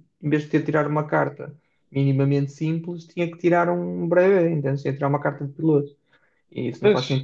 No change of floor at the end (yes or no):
yes